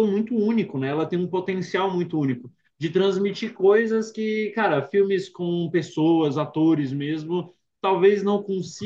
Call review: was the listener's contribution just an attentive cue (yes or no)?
yes